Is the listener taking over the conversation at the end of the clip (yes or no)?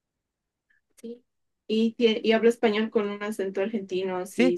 yes